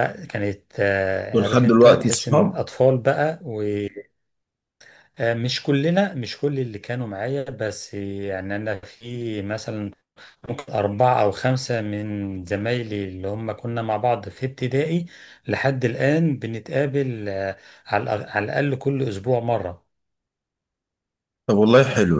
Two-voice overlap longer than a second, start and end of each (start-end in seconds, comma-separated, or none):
1.3-2.6